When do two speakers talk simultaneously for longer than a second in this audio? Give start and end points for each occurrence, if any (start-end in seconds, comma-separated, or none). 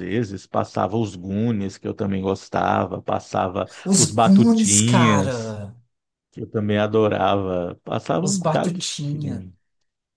3.9-5.6, 8.2-9.4